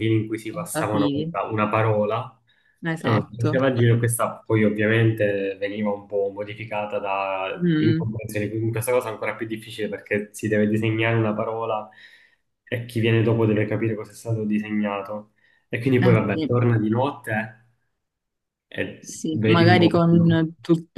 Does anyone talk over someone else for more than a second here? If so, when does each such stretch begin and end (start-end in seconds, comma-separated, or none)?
19.0-20.2